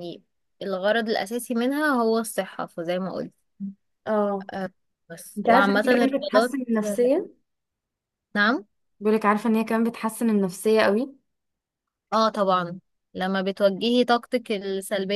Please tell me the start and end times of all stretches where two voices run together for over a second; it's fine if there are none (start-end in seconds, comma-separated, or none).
5.4-6.6